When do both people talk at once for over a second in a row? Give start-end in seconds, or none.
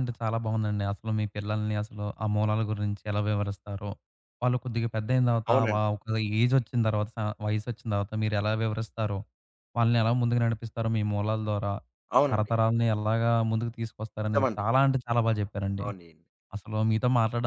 none